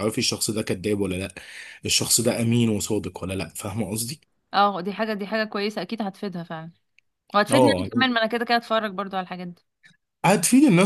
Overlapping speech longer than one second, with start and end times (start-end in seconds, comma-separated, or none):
none